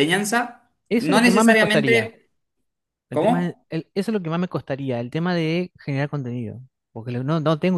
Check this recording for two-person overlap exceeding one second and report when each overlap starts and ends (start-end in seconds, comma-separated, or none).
0.9-2.1